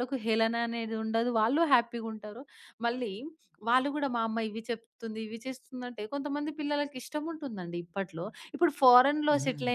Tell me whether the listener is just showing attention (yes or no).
yes